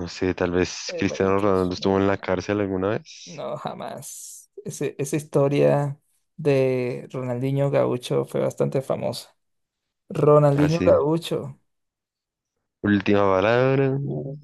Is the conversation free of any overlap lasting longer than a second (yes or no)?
no